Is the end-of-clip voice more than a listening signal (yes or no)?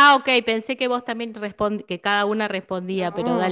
yes